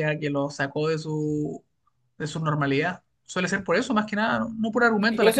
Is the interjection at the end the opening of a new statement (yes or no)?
yes